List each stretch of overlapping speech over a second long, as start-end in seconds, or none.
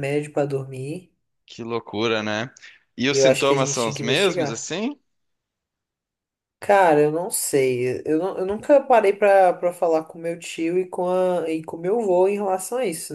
3.1-4.7